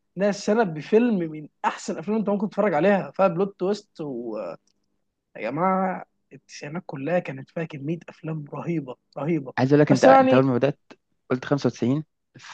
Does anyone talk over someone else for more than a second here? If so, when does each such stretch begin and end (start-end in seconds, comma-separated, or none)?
none